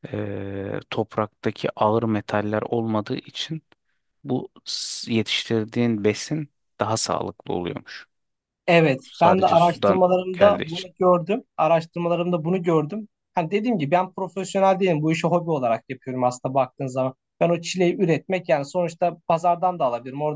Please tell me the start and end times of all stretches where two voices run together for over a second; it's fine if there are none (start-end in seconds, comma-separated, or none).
9.0-10.9